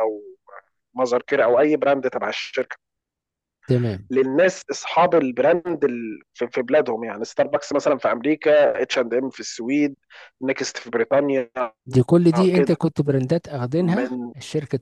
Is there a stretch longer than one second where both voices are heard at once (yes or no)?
no